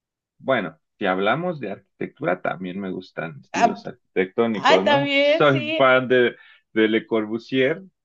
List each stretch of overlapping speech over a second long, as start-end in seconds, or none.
4.5-6.0